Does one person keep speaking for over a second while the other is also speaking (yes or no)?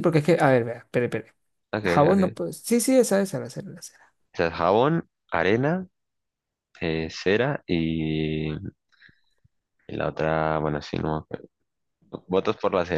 no